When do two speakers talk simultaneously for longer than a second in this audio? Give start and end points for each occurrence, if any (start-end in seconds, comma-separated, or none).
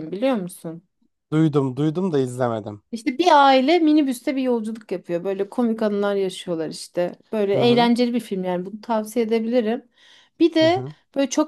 none